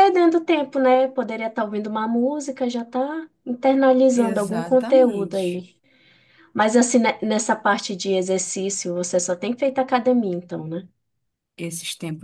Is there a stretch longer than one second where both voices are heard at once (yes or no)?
yes